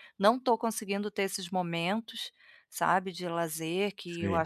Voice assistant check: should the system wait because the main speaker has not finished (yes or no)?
yes